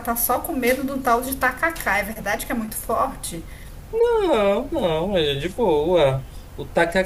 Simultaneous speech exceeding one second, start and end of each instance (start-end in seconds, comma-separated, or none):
none